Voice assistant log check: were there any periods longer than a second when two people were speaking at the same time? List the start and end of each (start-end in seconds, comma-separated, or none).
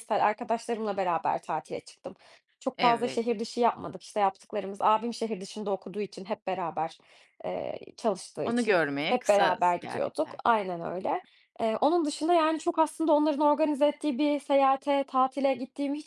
8.4-10.4